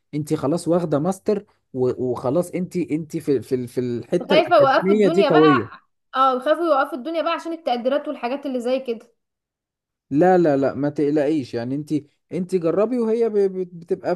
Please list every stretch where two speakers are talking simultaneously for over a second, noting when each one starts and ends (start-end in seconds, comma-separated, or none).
4.3-5.7